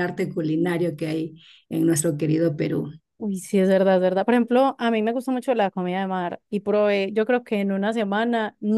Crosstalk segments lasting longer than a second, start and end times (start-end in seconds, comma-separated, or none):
none